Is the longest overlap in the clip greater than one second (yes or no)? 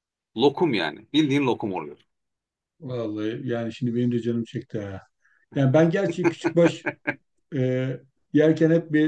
no